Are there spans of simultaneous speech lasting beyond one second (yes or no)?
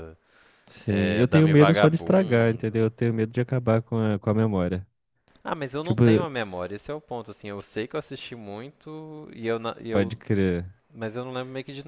yes